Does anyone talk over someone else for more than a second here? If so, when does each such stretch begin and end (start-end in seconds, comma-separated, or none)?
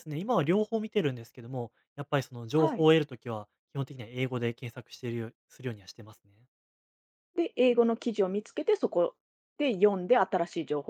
none